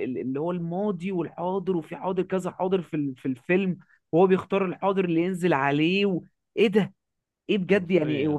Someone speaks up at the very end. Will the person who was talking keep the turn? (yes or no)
yes